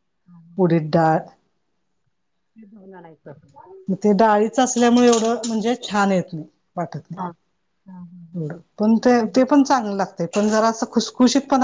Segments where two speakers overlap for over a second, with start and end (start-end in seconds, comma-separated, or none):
none